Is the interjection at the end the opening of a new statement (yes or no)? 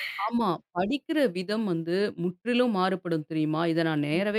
no